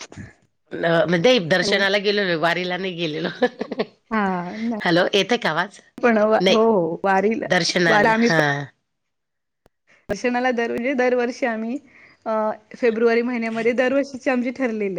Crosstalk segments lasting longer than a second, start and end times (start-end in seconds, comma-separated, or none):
none